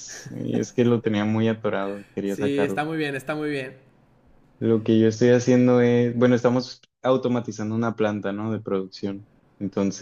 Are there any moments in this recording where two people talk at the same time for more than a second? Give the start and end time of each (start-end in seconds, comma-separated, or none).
none